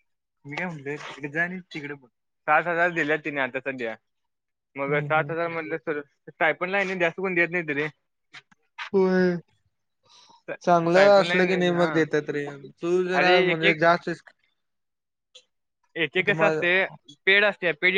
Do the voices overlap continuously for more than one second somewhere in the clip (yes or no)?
yes